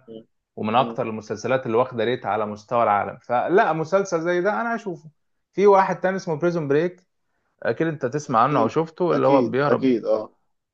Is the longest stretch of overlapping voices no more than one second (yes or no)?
no